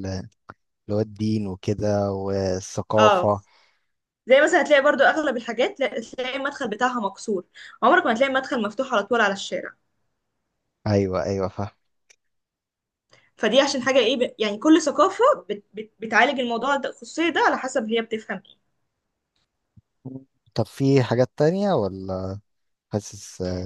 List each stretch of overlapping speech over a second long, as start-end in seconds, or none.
none